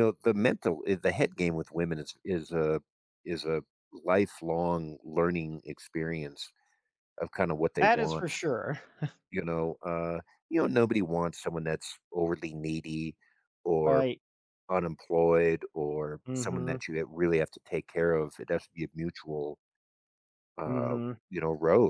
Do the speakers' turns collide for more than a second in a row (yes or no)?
no